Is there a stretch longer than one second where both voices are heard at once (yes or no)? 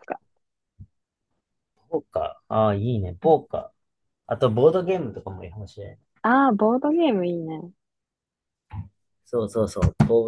no